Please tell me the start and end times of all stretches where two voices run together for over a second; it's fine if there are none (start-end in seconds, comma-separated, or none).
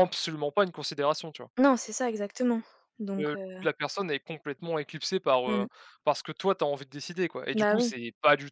none